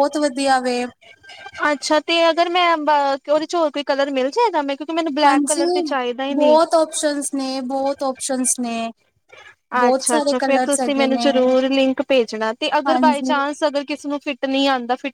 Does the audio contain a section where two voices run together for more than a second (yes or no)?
yes